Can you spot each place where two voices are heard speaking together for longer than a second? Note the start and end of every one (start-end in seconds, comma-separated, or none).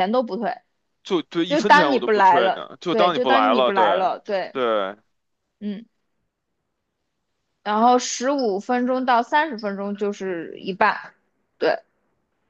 1.5-3.8